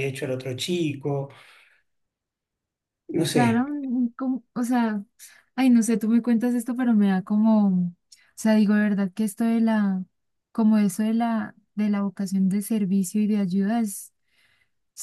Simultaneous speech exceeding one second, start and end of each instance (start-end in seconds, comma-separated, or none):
none